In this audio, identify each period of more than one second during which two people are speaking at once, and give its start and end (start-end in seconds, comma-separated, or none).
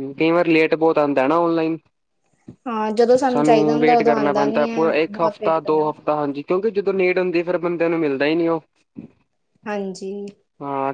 3.3-5.8